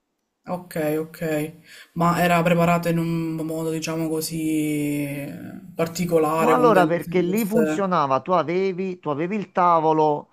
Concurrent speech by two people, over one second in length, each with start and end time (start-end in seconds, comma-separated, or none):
6.4-7.8